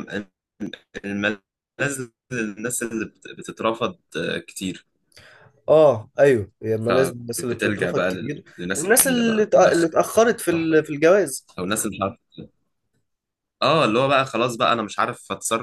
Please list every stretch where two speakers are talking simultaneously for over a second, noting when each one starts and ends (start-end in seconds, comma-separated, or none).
6.8-9.9